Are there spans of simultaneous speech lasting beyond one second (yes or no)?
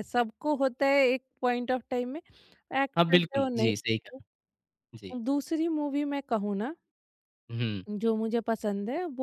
yes